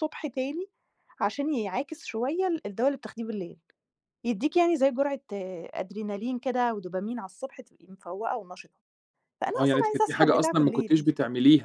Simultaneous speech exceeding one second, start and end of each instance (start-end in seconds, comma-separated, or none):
9.5-11.1